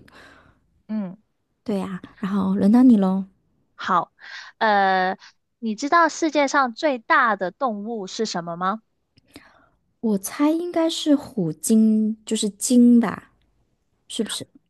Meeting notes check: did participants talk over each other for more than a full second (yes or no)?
no